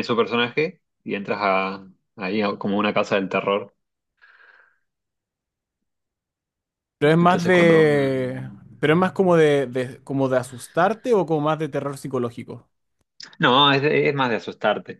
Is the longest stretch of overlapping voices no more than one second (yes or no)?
no